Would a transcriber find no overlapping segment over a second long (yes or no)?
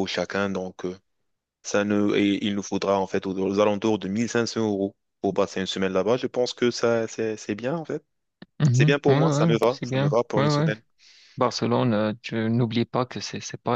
no